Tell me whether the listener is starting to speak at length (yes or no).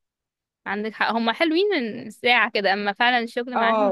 yes